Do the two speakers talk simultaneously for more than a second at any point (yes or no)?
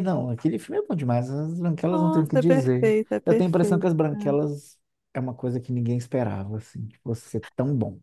yes